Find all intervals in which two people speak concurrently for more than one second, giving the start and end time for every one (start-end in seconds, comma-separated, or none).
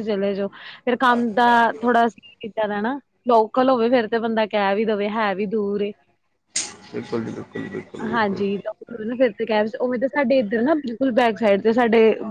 none